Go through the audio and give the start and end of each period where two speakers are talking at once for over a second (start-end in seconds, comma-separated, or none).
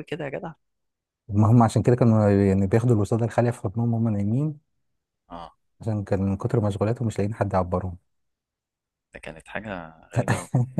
none